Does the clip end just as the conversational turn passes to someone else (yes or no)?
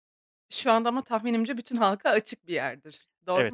yes